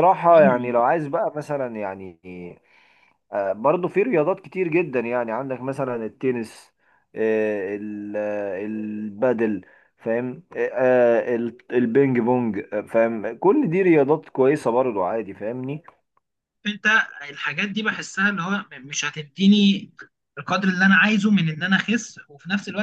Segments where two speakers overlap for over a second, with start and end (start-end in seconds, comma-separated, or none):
none